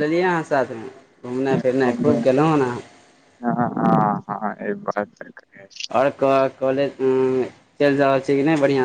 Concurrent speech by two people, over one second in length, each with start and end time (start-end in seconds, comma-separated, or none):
none